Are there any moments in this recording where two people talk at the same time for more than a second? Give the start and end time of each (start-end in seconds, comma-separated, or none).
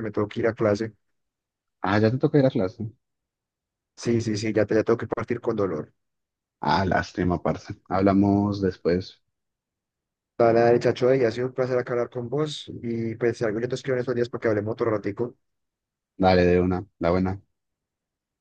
none